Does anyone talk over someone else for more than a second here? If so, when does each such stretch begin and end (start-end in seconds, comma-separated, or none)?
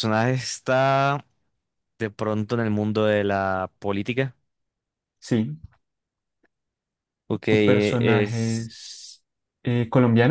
7.5-8.7